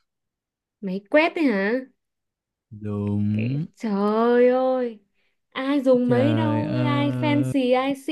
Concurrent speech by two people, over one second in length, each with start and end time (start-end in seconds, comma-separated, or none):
6.1-7.5